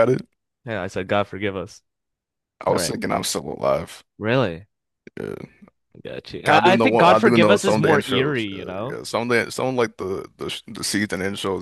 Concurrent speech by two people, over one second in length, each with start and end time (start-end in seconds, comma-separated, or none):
6.5-9.0